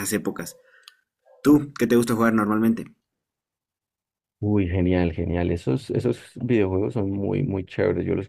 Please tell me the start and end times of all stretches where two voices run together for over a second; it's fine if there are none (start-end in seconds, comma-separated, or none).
none